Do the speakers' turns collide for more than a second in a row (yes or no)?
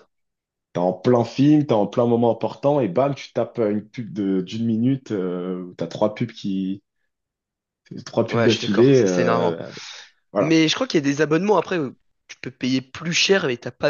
yes